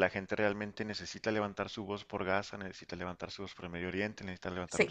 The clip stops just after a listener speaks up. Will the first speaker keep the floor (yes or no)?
yes